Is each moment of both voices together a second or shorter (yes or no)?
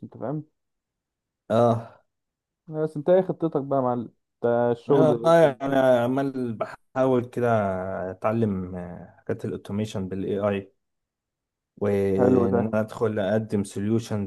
yes